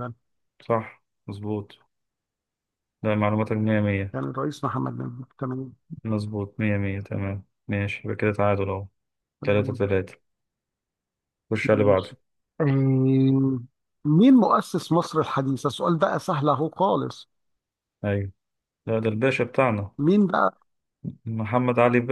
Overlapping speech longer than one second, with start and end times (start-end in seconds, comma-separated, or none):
none